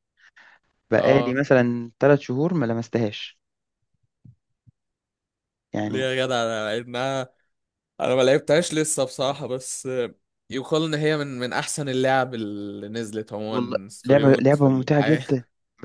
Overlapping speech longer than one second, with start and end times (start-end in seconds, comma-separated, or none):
13.5-15.2